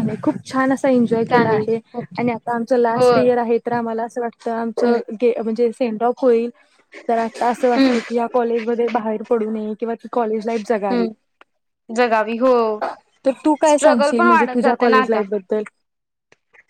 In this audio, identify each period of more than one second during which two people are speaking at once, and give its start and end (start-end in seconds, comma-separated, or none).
13.7-15.2